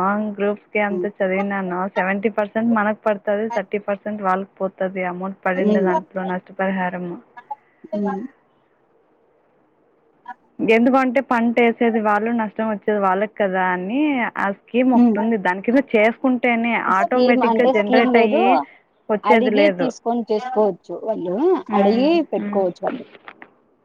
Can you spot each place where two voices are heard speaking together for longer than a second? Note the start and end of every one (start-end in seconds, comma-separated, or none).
17.0-18.4